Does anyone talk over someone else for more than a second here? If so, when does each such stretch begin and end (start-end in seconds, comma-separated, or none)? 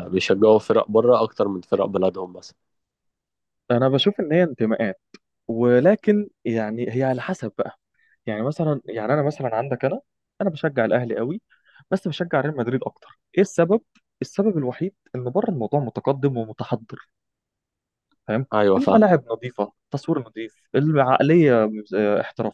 none